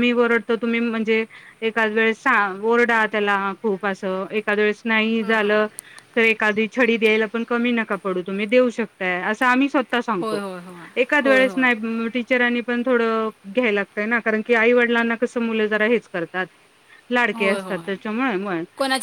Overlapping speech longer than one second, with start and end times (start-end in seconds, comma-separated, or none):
none